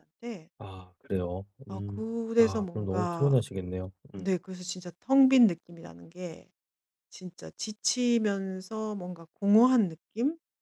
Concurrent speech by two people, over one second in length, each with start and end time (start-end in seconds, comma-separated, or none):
1.7-3.4